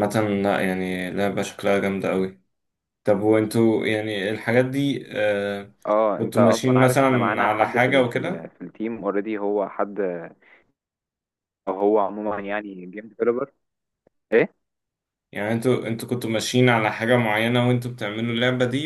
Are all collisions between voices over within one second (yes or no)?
no